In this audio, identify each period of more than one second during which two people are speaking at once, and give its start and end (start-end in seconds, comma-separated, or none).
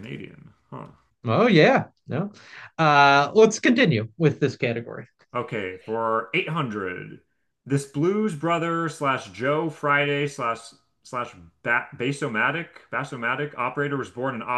none